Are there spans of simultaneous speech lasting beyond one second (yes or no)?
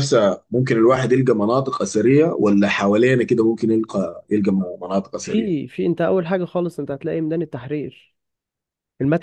no